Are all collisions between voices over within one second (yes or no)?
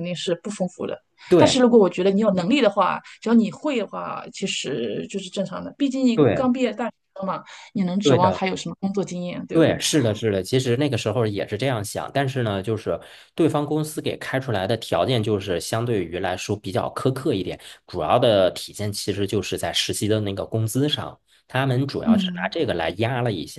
yes